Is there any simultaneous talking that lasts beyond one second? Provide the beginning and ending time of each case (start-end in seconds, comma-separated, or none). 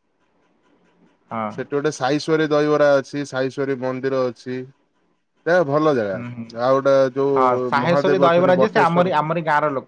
7.4-9.2